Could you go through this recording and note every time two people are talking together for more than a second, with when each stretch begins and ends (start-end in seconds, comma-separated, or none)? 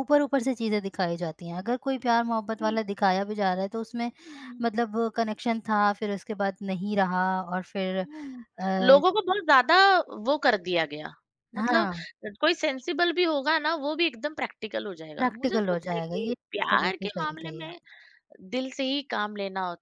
15.2-17.8